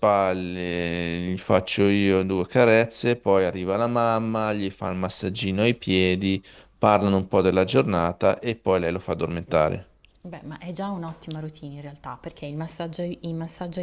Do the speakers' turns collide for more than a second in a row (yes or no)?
no